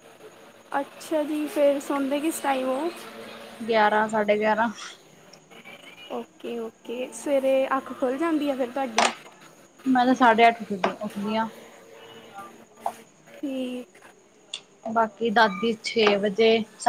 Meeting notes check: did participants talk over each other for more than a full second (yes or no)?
no